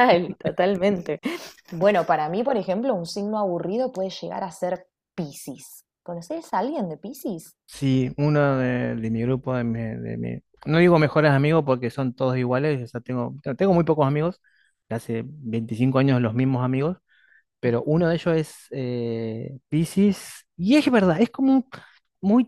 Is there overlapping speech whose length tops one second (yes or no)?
no